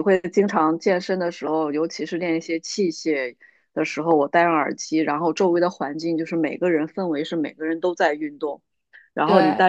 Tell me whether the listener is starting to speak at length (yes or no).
no